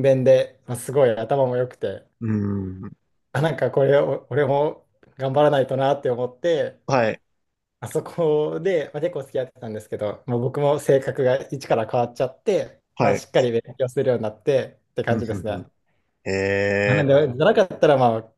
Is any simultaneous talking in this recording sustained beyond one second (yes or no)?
no